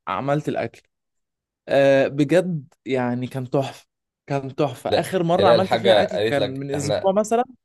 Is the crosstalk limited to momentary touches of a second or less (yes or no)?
no